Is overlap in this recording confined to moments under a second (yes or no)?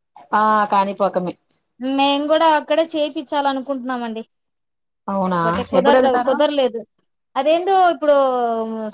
yes